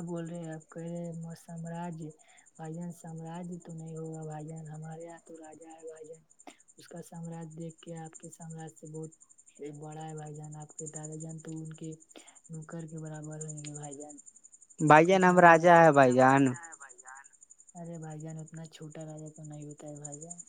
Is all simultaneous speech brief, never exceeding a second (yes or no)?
no